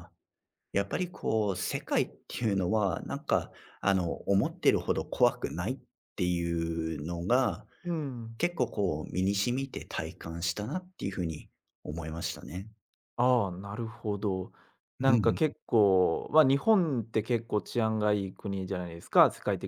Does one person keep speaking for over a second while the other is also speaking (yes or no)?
no